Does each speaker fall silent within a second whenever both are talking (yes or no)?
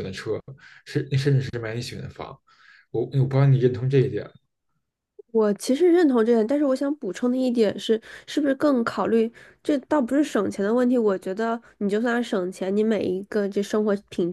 yes